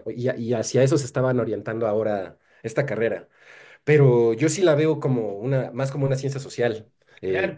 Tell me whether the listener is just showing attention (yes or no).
no